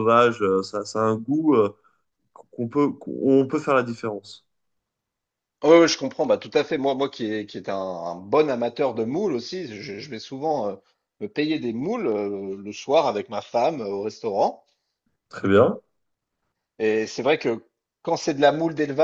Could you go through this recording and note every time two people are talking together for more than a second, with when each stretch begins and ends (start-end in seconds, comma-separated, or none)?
none